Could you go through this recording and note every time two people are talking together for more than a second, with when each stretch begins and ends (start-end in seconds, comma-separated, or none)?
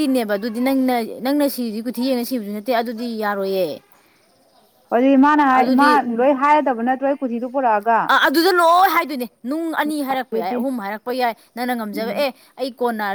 none